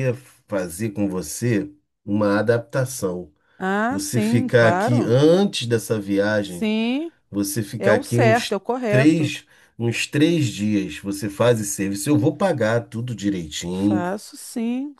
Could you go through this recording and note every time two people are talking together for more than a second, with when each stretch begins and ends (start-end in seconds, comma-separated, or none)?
3.9-5.1, 7.8-9.3